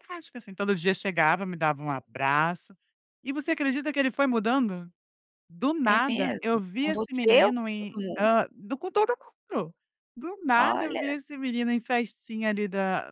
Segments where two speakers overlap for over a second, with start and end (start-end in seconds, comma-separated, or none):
5.9-8.3